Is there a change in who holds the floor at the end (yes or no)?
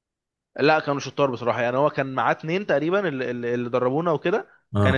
no